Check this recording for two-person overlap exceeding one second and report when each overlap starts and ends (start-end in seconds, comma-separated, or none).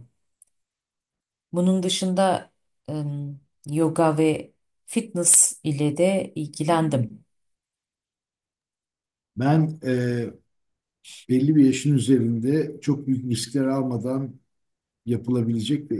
none